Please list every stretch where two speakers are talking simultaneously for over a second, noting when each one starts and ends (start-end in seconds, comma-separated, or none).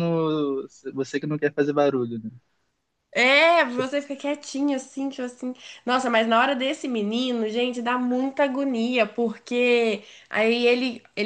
none